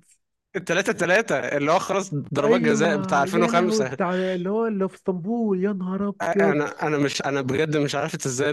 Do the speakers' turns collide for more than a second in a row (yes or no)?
yes